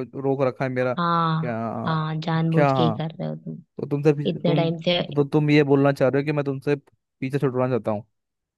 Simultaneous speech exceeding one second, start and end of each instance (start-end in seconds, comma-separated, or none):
none